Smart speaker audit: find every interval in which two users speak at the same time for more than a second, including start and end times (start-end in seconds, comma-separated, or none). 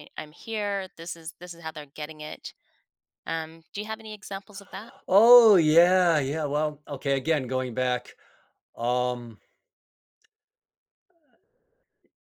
none